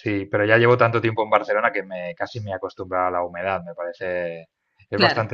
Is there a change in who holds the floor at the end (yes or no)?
no